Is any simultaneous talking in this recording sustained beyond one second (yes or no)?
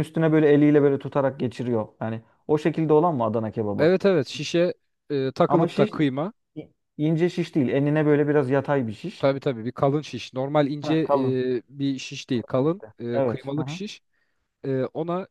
yes